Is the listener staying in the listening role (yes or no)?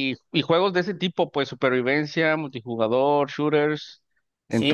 no